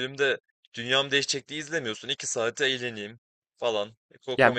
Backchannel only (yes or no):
no